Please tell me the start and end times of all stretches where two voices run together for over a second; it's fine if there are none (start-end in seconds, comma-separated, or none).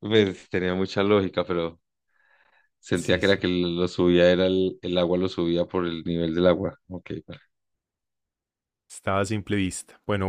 none